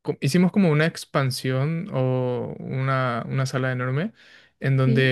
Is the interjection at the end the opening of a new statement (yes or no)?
no